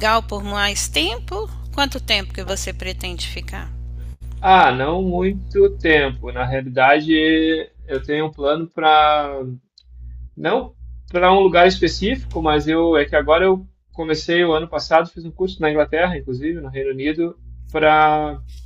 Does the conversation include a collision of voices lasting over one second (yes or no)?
no